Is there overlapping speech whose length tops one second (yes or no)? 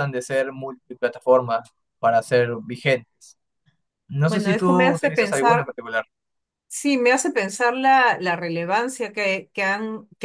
yes